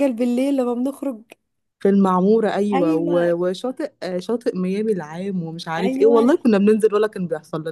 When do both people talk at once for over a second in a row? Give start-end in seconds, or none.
none